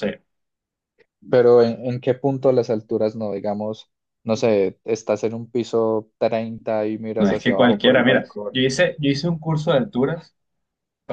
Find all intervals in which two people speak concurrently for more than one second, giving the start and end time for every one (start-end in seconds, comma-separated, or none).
7.2-8.6